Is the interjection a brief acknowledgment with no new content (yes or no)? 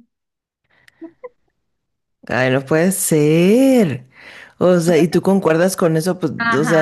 no